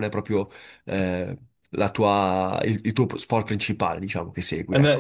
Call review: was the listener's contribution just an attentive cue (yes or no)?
no